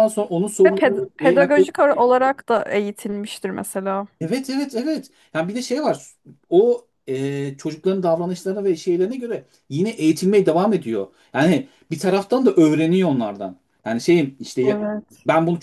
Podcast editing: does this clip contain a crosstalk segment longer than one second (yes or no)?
yes